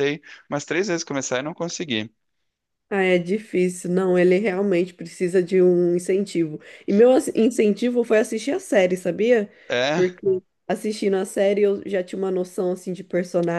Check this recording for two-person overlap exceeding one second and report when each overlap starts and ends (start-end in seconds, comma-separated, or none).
none